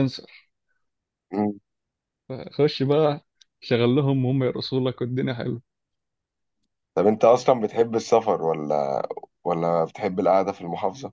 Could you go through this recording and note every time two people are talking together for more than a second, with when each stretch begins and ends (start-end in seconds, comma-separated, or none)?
none